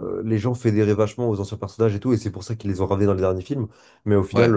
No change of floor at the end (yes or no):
yes